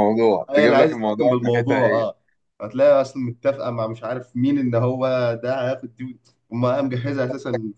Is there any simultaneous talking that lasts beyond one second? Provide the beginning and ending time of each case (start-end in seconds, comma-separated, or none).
0.5-2.1